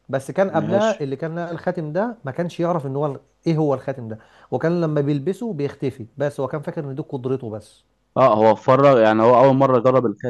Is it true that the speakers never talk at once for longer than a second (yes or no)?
yes